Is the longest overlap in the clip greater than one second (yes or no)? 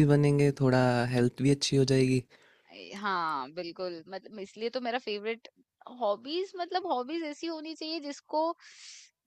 no